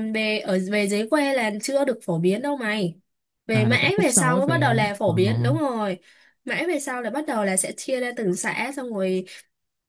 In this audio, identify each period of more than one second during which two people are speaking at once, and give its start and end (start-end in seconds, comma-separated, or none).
3.5-5.1